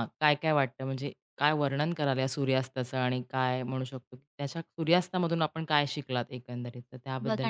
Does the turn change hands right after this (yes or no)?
yes